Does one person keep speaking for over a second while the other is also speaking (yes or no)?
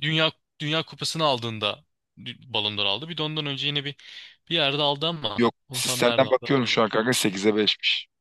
yes